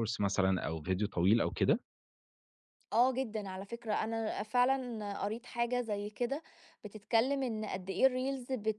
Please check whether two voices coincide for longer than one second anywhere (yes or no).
no